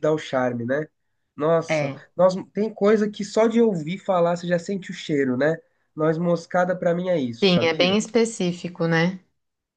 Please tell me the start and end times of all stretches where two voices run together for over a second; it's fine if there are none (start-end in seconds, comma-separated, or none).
none